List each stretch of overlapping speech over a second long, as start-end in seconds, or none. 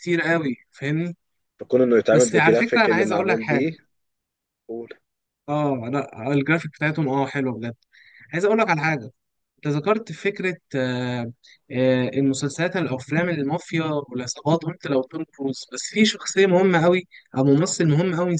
2.1-3.7